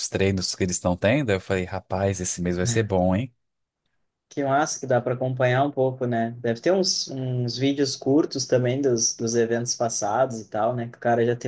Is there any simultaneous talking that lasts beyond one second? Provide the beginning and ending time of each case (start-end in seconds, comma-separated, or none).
none